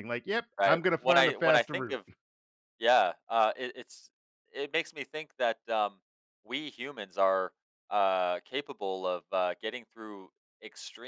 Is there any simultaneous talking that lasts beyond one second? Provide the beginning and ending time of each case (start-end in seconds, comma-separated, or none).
0.6-2.0